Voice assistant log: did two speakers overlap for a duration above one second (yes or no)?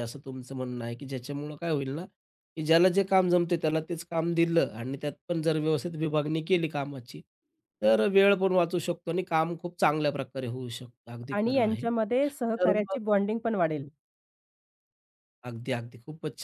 yes